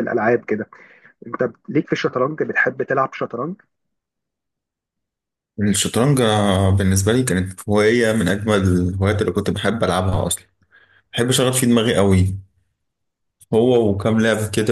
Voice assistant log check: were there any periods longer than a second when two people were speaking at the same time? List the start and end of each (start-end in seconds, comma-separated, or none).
none